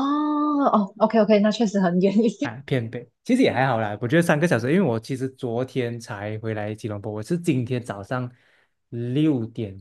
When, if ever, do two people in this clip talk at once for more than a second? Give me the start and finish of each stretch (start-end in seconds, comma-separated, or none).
none